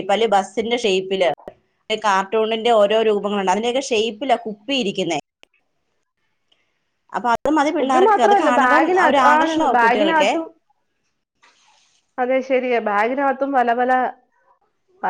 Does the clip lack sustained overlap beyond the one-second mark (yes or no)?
no